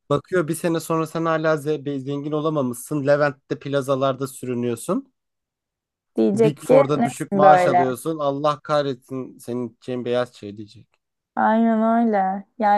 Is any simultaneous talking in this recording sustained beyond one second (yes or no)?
yes